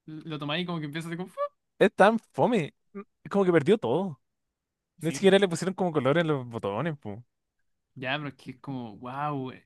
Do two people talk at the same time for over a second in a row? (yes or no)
no